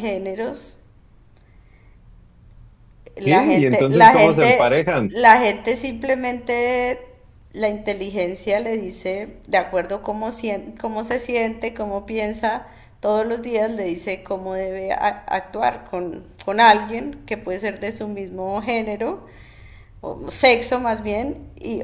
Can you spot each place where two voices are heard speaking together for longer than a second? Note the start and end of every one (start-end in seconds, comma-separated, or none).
3.2-5.1